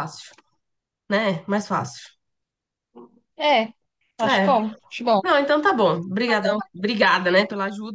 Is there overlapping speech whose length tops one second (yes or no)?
no